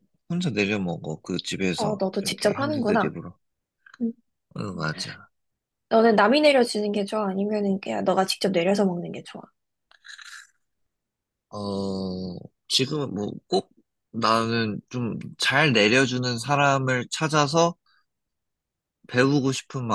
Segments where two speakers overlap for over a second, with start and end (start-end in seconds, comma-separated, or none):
1.8-3.2